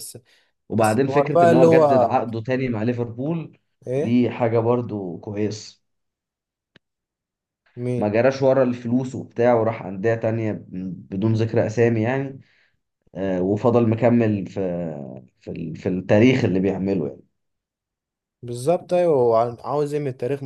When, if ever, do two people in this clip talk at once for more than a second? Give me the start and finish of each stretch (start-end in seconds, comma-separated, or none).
0.7-2.2